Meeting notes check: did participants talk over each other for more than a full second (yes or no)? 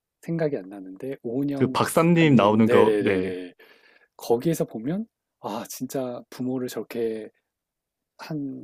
yes